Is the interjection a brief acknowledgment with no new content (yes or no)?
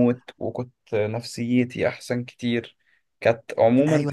no